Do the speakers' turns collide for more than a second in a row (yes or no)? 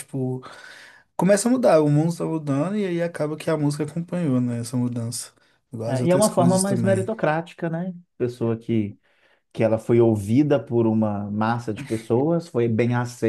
yes